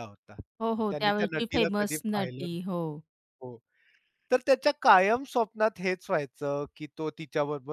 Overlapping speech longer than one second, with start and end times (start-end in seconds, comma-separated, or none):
0.9-2.6